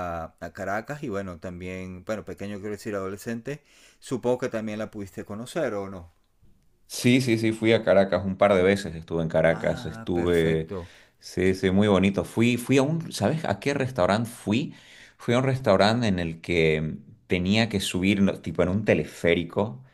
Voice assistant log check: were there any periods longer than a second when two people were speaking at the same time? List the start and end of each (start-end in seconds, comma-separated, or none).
9.5-10.7